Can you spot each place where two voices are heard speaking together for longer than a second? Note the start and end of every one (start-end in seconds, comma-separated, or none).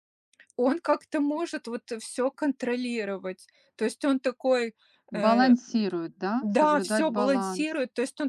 6.4-7.8